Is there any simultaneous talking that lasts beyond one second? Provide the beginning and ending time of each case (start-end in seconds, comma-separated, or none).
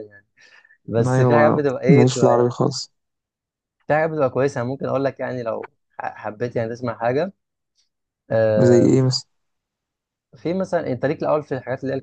1.1-2.6